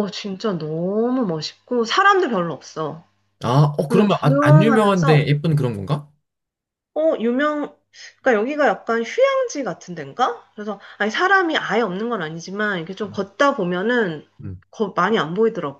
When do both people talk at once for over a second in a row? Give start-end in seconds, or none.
3.9-5.3